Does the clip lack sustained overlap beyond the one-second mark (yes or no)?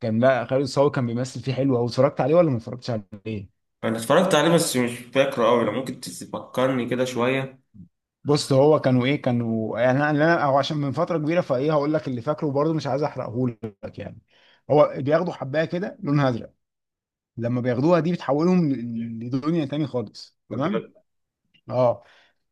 yes